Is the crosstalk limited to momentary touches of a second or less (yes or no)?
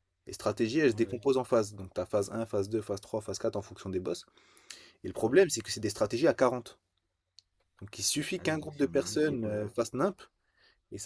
no